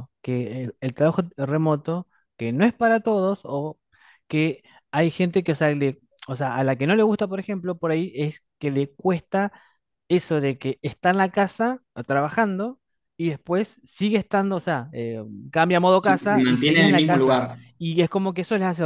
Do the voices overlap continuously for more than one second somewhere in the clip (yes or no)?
yes